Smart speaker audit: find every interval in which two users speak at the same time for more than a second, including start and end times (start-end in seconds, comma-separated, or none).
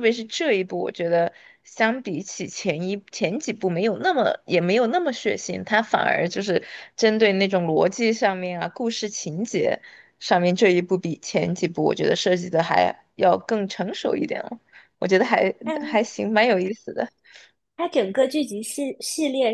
none